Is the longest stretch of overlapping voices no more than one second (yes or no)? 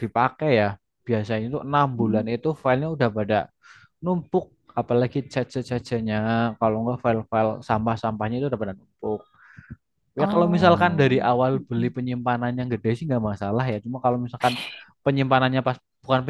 no